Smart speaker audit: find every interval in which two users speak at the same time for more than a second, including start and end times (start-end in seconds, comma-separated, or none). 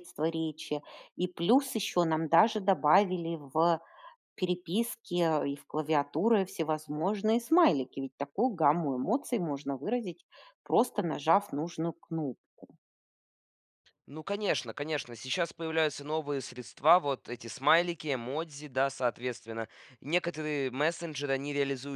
none